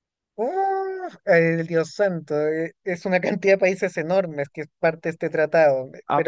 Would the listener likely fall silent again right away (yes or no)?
no